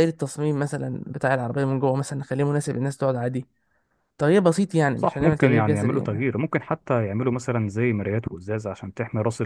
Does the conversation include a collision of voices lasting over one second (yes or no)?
yes